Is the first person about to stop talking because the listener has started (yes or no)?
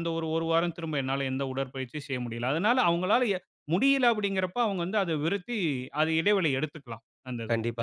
yes